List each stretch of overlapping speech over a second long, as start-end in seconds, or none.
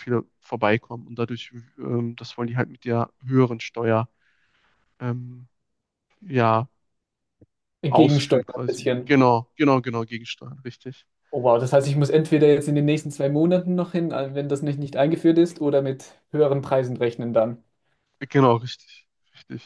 7.9-9.2